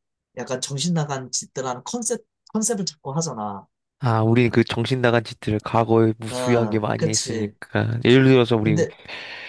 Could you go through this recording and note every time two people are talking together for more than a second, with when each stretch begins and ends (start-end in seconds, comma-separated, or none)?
6.3-7.5